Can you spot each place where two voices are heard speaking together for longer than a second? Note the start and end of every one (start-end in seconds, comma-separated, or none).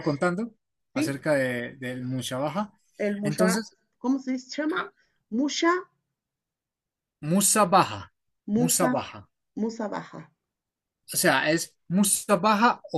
none